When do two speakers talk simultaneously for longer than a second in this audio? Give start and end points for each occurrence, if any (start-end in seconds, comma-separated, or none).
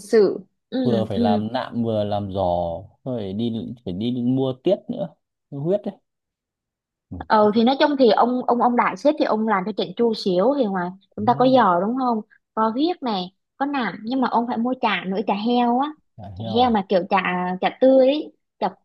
none